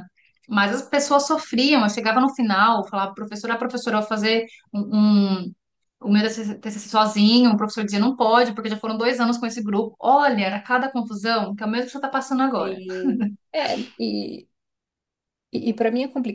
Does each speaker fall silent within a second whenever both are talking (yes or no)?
yes